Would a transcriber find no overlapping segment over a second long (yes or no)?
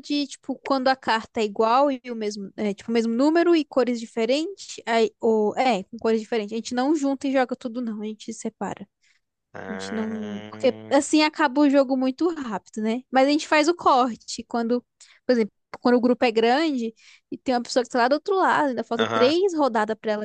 no